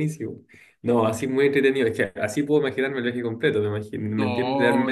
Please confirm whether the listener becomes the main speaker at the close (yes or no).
no